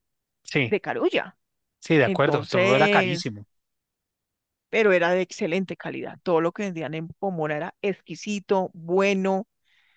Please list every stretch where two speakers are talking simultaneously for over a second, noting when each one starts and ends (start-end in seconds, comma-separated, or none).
2.0-3.3